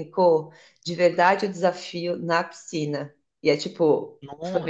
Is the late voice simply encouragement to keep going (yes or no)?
yes